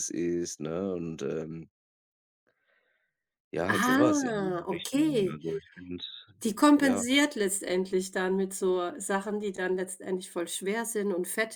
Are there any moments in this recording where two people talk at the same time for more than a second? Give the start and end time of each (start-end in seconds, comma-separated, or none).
3.7-5.4